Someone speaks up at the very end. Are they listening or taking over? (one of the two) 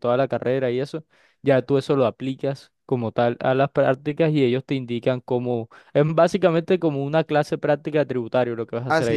taking over